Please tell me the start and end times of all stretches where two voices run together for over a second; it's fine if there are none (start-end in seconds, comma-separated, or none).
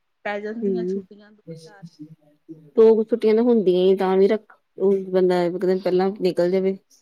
none